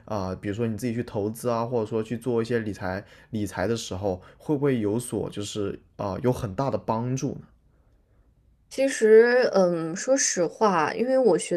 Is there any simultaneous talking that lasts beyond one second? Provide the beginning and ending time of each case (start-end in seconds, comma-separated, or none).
none